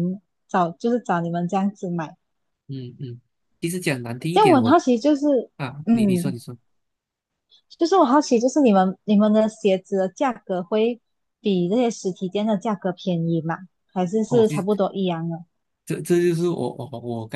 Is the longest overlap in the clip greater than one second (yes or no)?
no